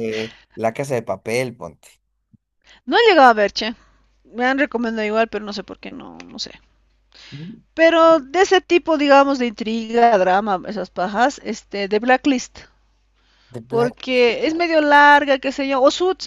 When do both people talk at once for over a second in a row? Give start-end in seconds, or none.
none